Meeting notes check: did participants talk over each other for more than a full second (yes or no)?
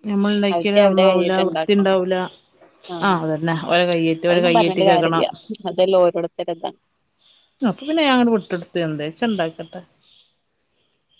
yes